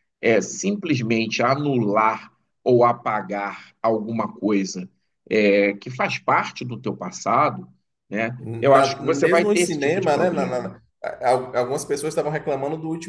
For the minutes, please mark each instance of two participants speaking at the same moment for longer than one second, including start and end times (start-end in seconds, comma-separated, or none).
8.4-10.8